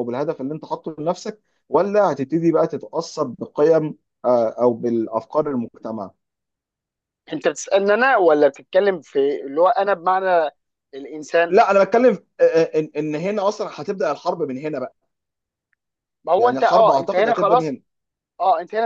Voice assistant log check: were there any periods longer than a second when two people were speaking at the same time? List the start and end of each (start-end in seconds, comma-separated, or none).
16.4-17.8